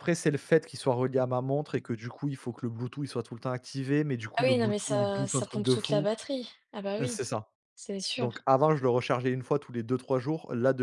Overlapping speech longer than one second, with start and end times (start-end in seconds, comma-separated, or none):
4.4-6.1